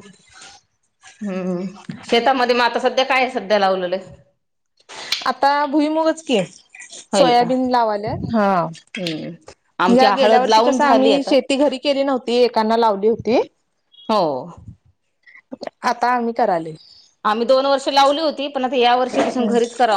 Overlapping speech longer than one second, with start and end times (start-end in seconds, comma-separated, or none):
9.9-11.3